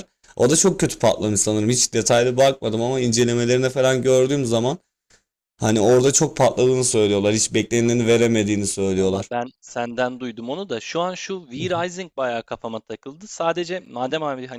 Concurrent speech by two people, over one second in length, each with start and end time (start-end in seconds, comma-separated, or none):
none